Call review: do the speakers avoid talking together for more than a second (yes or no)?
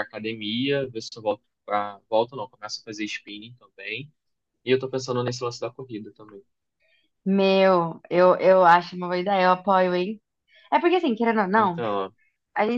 yes